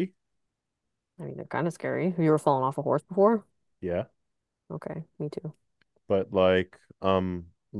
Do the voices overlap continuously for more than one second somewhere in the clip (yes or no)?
no